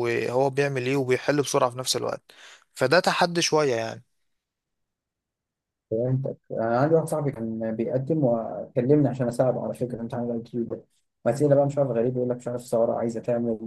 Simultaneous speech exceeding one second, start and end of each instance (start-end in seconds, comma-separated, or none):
none